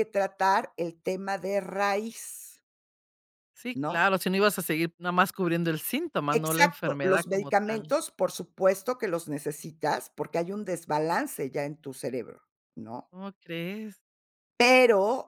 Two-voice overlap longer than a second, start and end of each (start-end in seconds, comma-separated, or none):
6.3-7.9